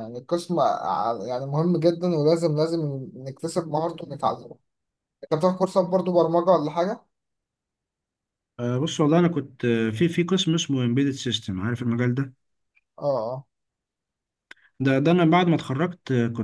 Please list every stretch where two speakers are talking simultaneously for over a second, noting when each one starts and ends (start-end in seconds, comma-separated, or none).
none